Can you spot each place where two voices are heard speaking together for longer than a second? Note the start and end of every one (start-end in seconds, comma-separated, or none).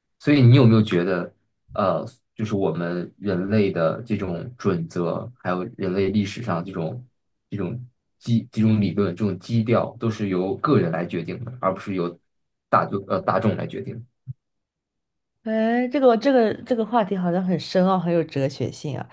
none